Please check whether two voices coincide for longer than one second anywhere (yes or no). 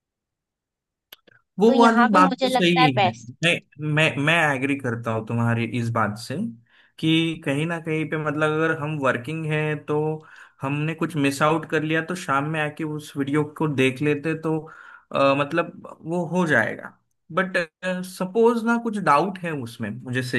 yes